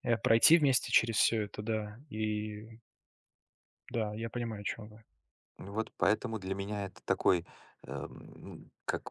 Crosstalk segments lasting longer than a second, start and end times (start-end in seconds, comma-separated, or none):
none